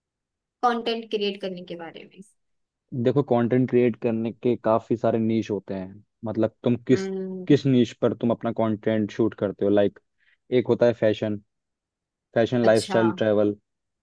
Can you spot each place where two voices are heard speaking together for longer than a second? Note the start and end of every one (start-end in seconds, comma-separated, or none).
none